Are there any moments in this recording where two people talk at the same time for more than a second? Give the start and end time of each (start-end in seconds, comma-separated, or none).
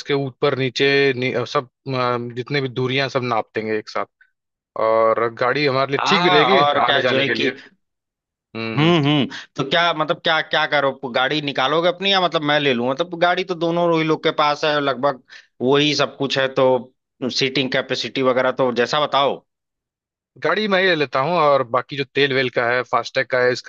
6.0-7.5